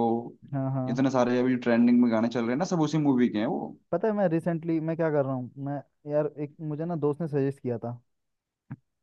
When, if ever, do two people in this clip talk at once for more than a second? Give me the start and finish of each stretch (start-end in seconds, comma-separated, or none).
none